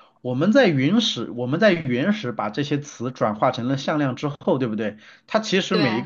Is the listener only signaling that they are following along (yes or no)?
yes